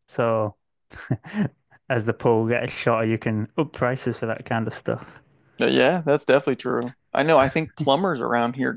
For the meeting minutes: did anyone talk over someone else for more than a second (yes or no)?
no